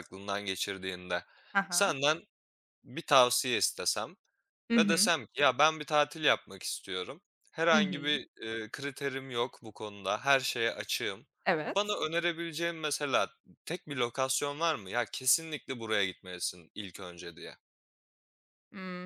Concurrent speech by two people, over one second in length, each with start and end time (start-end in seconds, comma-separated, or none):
none